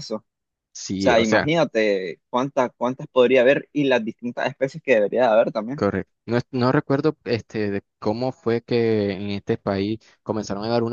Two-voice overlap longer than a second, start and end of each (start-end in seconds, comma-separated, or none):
none